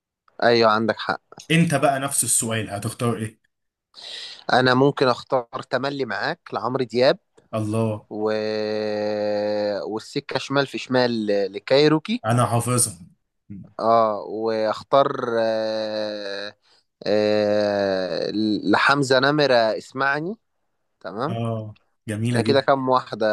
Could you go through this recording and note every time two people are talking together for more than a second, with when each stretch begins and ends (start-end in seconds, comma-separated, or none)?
none